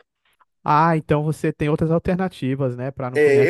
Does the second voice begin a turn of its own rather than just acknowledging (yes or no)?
yes